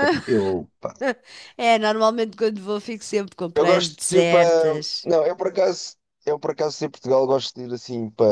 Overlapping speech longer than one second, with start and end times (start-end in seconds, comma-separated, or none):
3.5-5.1